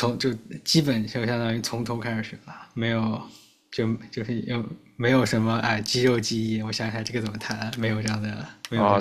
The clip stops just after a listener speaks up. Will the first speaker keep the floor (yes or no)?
no